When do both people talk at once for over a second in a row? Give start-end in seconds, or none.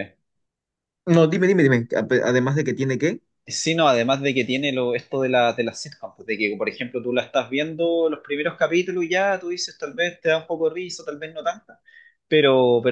none